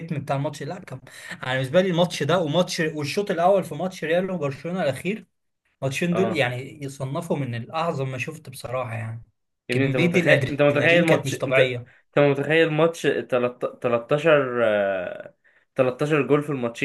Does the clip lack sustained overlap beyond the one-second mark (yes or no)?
no